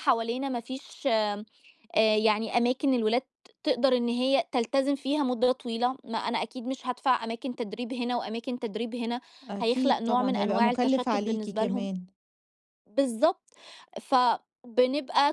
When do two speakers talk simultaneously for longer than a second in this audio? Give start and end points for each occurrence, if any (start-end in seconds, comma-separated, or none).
9.6-11.9